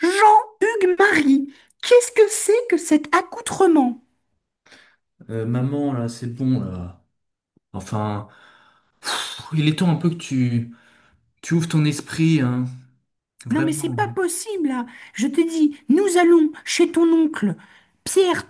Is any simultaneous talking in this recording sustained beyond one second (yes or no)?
no